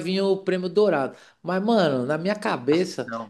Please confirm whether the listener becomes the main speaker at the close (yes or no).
no